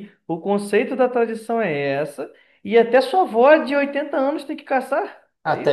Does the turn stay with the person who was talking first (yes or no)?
no